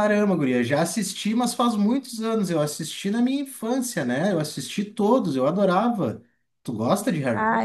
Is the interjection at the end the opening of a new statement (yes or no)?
yes